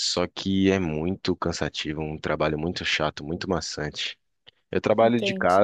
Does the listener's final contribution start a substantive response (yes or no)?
no